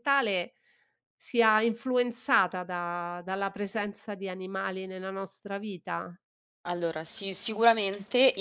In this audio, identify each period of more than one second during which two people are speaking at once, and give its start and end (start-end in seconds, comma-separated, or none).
none